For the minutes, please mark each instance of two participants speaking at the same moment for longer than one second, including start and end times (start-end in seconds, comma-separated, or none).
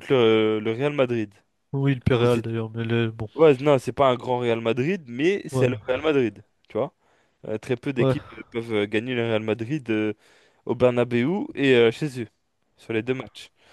none